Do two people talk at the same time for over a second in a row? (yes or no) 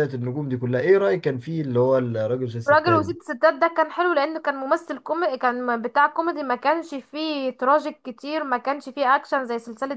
no